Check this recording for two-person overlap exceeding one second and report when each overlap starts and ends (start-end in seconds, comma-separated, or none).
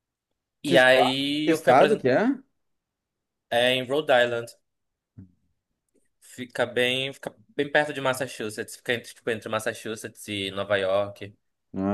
0.7-2.1